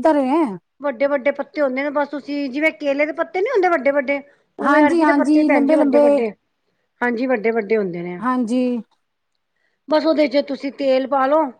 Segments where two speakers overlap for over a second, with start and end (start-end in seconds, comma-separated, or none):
4.7-6.2